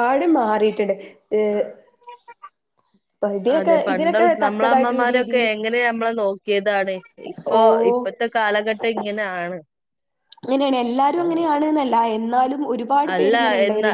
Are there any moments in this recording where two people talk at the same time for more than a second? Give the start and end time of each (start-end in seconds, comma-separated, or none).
3.6-5.5